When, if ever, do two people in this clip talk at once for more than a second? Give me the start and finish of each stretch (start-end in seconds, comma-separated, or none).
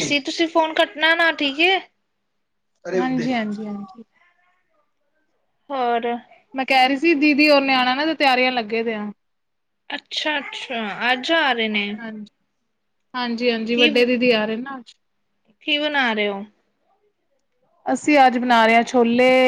none